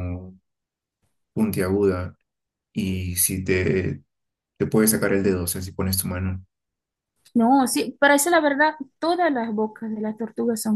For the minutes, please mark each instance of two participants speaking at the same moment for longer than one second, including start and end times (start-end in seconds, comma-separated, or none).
none